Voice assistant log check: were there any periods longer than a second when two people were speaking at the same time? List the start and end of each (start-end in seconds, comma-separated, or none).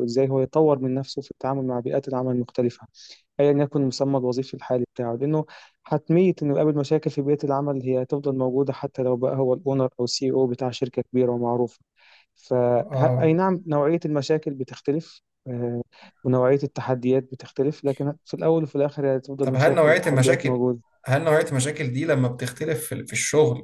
19.4-20.6